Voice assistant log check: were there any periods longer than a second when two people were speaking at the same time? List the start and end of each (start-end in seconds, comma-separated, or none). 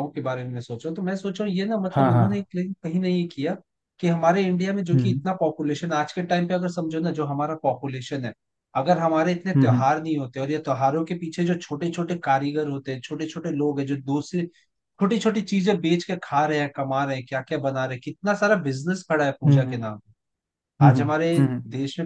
none